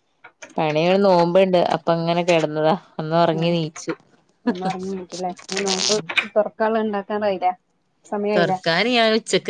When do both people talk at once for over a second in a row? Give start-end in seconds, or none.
none